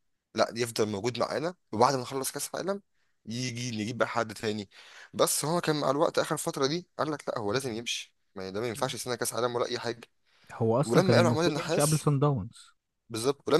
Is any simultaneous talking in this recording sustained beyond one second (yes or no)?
yes